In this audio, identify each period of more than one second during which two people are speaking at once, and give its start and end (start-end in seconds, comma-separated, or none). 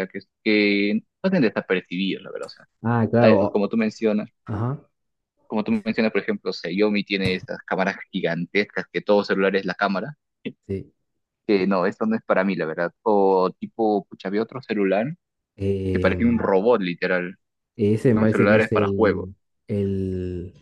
18.0-19.3